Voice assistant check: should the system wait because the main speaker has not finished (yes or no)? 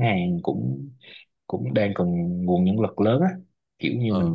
yes